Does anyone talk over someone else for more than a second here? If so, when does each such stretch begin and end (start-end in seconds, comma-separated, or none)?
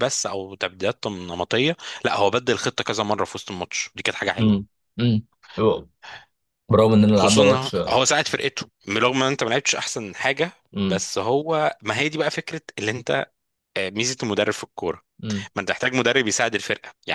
none